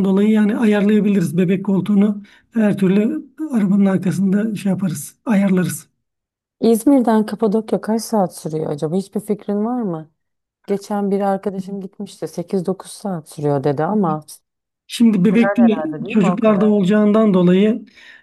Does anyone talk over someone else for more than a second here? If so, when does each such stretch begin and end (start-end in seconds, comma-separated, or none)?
15.3-16.8